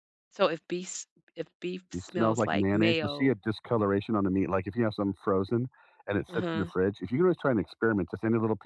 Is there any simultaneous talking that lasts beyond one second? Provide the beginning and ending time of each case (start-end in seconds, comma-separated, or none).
1.9-3.3